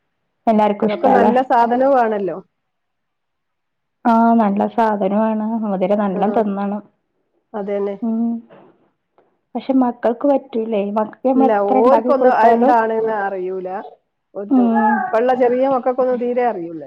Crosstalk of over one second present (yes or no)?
no